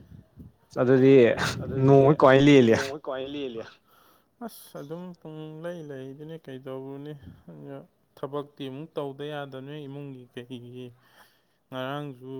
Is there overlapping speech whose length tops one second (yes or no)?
no